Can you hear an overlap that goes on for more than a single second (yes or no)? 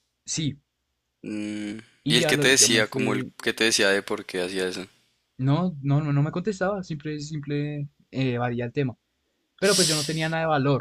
yes